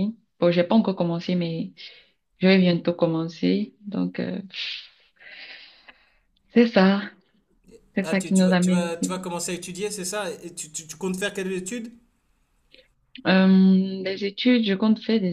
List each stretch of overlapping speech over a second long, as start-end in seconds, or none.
8.0-9.2